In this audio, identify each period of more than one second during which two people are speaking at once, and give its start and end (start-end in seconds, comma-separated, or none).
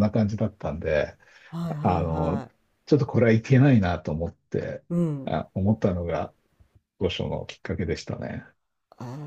none